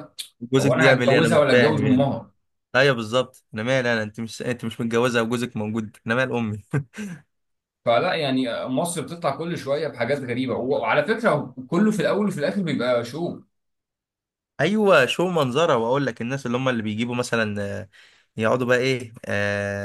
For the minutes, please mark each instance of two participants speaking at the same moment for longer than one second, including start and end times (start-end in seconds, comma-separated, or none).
0.6-2.0